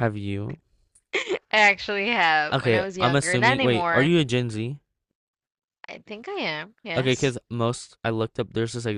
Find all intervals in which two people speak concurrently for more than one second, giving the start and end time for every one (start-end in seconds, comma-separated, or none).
2.5-4.1